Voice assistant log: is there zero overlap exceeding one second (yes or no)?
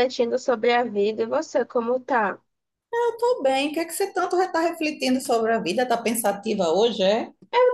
yes